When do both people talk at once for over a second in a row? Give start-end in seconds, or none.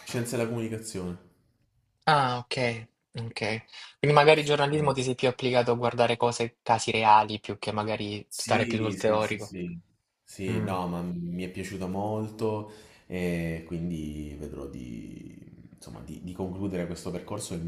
8.3-9.5